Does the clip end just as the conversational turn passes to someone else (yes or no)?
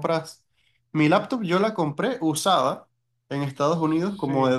no